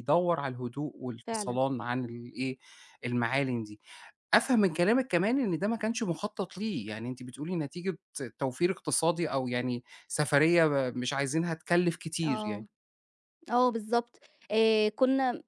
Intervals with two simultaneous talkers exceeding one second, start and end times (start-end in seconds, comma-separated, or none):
none